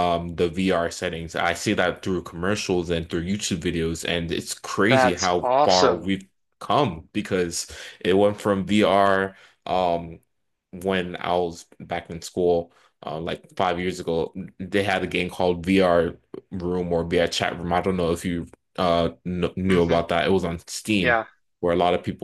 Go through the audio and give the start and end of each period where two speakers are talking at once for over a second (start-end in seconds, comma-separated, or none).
4.9-6.1